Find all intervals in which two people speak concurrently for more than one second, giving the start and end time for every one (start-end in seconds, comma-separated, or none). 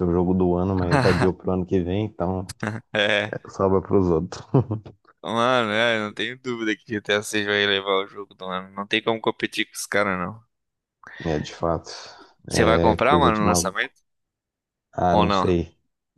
12.5-13.9